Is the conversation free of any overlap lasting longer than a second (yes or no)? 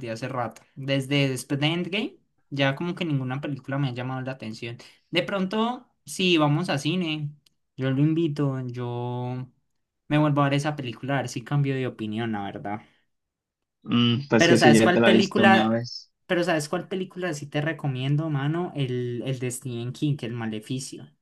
no